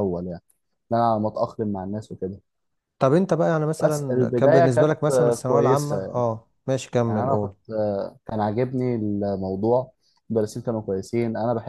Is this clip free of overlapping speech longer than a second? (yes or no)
no